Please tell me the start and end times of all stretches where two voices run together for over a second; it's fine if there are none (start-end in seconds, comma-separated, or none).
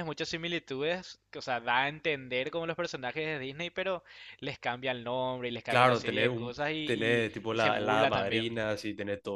5.7-8.5